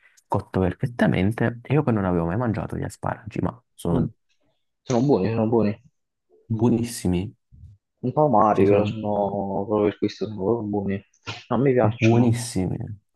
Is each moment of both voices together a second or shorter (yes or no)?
yes